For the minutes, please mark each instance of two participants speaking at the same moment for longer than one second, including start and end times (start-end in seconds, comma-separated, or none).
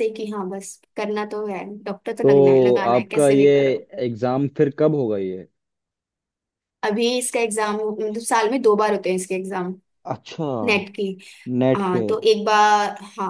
2.2-3.5